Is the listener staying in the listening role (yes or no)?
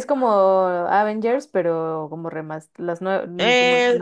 no